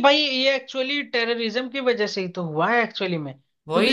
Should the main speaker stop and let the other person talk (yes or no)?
no